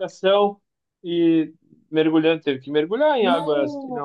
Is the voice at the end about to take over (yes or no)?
no